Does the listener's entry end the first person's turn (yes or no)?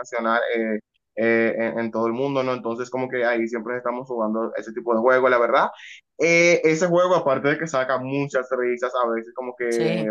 no